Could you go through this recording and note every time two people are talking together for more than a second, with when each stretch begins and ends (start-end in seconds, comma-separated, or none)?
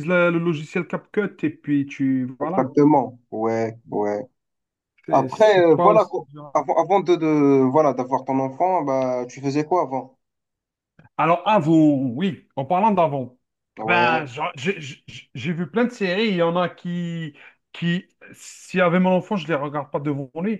5.1-6.7